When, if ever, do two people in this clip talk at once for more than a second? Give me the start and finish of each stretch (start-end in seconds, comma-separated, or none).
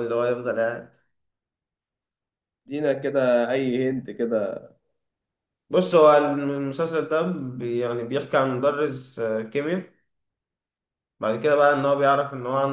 none